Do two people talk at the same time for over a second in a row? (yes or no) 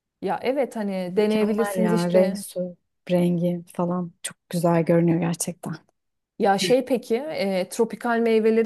yes